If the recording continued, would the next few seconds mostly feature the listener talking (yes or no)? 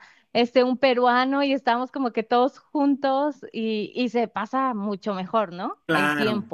yes